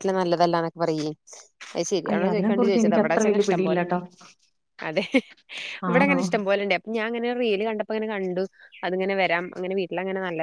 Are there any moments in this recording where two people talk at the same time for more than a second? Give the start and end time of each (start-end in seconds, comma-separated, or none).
2.1-4.0